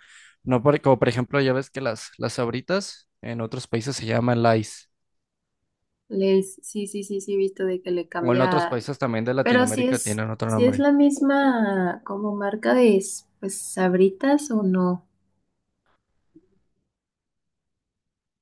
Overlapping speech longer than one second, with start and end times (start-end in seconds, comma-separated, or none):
9.4-10.9